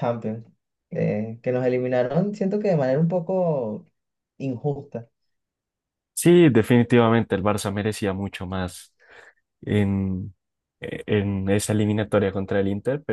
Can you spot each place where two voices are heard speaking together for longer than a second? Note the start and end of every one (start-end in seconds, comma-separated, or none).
none